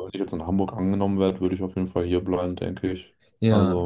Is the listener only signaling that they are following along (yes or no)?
no